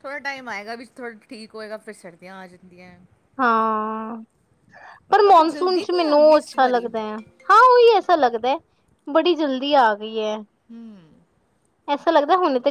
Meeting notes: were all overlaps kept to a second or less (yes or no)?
no